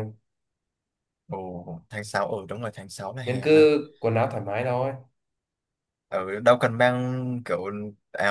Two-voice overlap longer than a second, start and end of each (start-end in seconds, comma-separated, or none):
none